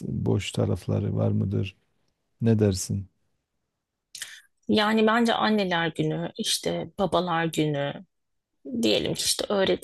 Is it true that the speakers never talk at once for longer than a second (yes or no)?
yes